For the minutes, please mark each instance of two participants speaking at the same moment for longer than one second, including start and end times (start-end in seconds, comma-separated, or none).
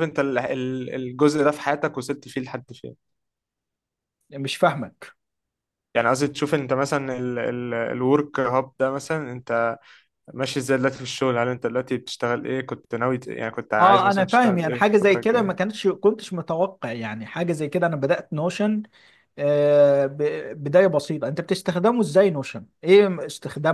13.7-15.6